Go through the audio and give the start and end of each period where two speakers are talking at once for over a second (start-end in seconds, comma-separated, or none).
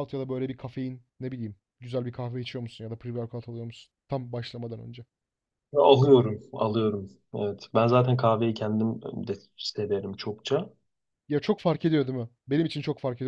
none